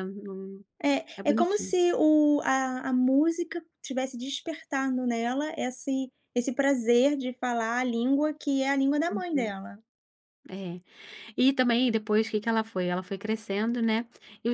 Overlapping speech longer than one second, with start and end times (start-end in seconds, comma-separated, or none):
none